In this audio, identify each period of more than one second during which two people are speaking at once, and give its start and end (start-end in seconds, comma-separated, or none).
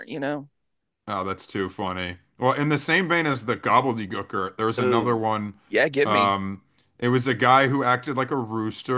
none